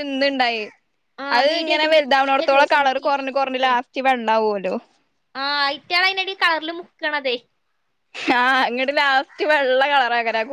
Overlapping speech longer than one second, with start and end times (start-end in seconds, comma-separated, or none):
1.4-3.7